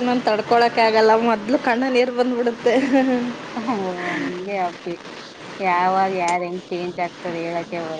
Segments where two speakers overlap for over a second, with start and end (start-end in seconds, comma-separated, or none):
none